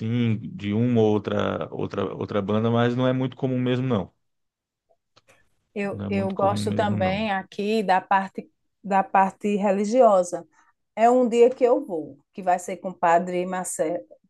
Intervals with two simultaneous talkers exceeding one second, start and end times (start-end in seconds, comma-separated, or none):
5.9-7.3